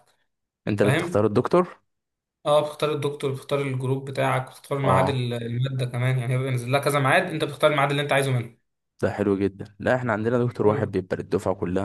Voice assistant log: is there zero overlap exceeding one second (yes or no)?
yes